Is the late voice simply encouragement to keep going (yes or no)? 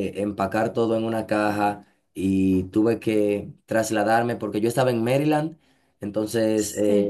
yes